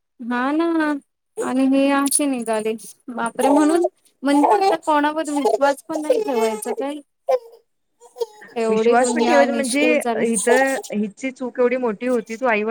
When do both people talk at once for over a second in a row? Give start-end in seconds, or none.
8.7-10.2